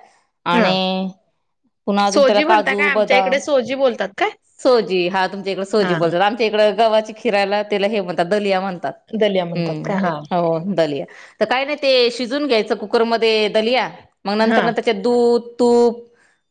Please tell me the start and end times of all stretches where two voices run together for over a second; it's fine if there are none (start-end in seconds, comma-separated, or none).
2.1-3.4